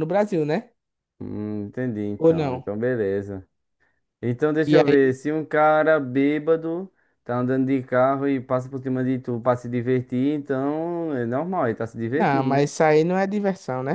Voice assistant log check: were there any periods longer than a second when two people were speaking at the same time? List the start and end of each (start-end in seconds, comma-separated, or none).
none